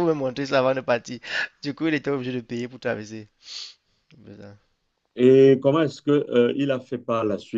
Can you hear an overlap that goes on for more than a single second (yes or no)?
no